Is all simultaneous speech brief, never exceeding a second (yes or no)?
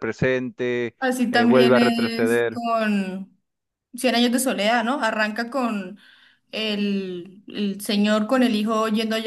no